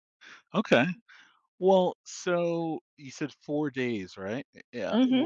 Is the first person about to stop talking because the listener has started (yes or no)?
no